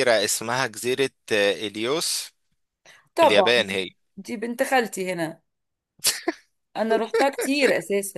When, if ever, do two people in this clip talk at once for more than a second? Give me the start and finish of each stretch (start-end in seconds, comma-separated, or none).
none